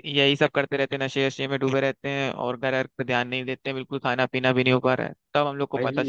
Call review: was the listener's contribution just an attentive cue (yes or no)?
no